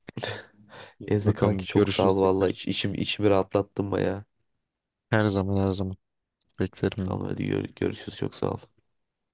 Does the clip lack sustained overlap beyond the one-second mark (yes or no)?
no